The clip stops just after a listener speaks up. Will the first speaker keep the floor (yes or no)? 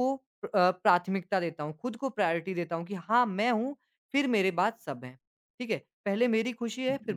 yes